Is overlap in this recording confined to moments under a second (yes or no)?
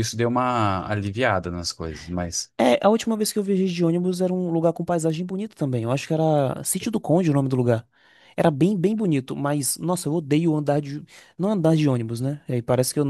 yes